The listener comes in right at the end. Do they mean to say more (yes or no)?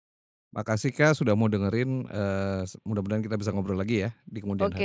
yes